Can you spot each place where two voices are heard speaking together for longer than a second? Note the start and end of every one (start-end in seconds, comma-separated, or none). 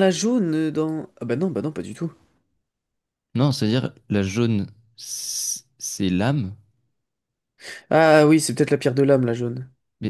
none